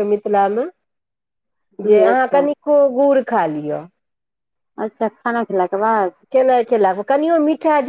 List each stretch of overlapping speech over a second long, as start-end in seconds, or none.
none